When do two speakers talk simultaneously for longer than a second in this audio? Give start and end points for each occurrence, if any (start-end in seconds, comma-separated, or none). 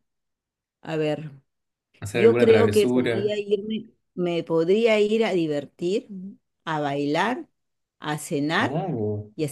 2.1-3.4